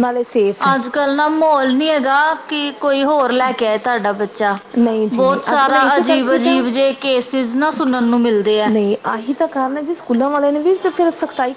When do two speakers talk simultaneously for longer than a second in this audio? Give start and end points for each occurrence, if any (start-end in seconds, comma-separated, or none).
5.1-6.6